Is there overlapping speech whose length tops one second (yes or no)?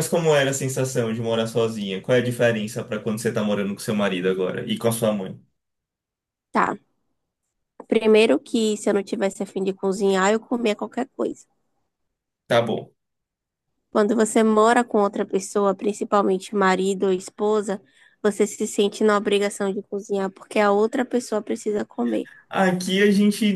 no